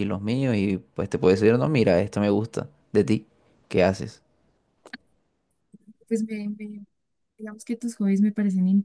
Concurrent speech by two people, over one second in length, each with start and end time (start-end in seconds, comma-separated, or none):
none